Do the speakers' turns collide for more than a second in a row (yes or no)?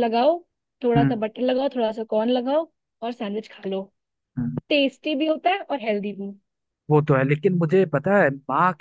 no